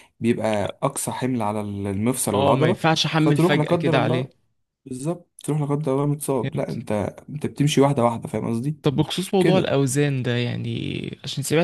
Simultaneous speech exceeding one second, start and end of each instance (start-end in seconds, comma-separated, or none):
2.3-4.3